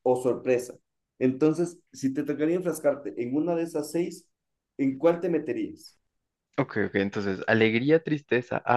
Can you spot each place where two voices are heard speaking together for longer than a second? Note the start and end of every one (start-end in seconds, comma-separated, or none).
none